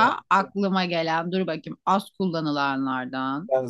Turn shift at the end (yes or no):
yes